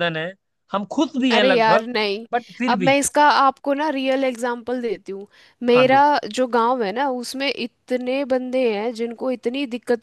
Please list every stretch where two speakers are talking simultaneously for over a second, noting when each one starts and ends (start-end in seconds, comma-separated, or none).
none